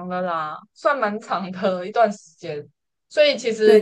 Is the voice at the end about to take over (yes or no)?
yes